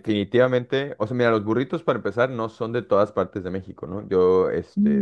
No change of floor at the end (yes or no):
yes